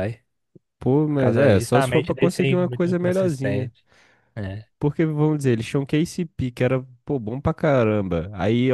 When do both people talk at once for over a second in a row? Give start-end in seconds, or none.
1.1-3.7